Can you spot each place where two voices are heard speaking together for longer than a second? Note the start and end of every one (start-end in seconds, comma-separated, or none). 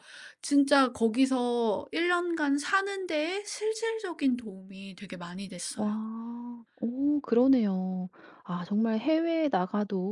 none